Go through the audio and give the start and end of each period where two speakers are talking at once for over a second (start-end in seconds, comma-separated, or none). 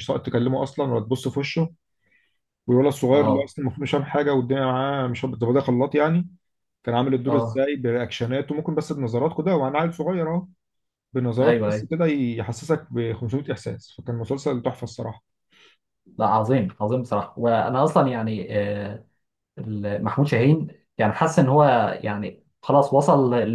none